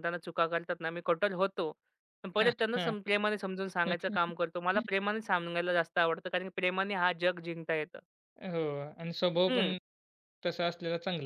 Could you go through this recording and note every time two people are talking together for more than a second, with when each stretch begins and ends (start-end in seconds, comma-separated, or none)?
none